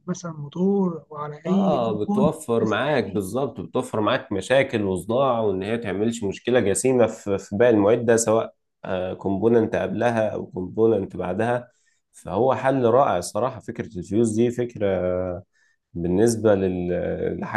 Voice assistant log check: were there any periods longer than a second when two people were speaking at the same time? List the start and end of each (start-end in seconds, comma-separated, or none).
1.5-3.4